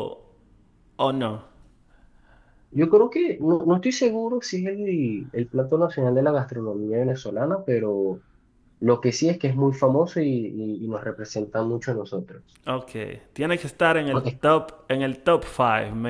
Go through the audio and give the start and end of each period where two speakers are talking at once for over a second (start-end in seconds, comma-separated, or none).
none